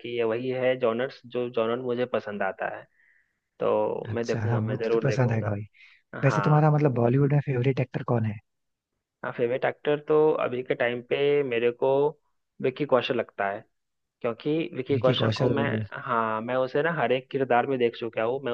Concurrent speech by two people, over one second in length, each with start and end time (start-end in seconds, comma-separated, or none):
4.1-5.5